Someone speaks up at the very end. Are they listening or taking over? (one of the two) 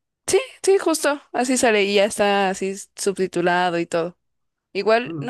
listening